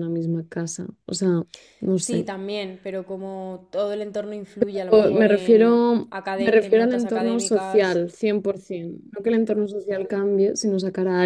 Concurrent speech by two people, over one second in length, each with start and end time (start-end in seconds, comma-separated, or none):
4.9-8.0